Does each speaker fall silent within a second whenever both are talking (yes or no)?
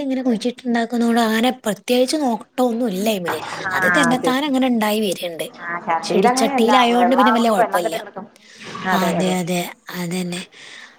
no